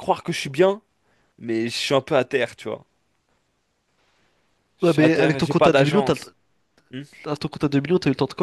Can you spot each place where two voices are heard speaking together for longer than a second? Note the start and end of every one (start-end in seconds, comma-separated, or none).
4.8-6.3